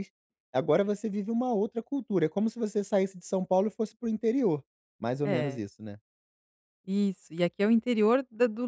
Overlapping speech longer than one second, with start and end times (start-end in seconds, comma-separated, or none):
none